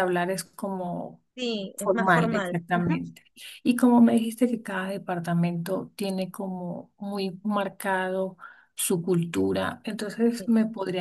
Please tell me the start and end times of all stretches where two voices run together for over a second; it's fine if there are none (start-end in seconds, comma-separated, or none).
1.8-3.1